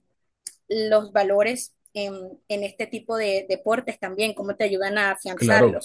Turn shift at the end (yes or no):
yes